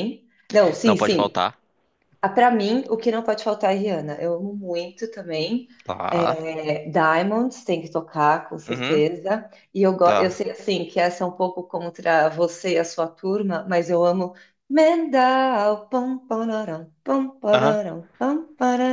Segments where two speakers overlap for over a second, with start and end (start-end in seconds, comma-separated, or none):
none